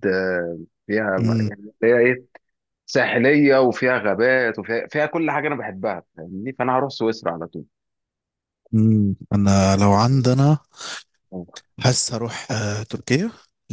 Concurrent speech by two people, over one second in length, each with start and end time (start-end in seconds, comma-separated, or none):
none